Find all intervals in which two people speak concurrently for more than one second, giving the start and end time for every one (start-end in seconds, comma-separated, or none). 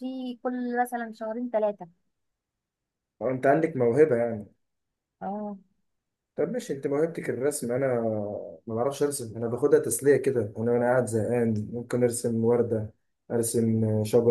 none